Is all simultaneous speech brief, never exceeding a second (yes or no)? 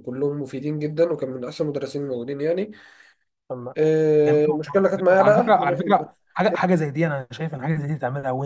no